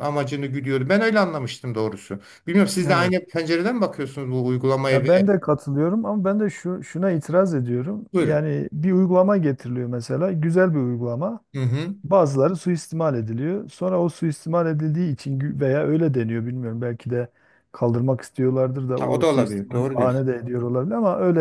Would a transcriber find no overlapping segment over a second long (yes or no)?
no